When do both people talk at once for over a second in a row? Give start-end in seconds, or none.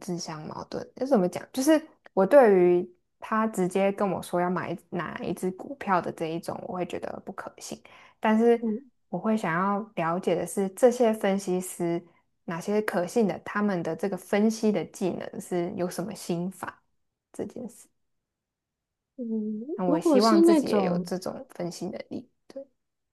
19.9-21.1